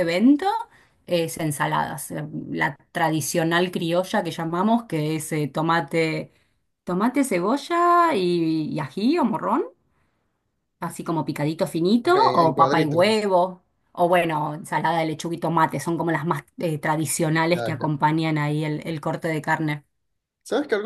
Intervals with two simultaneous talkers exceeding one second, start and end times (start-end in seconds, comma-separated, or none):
12.0-13.2